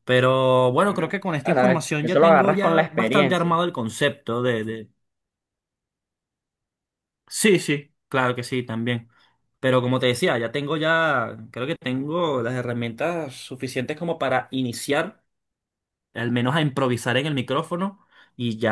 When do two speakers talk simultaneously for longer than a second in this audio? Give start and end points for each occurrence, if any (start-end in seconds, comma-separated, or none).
0.8-3.5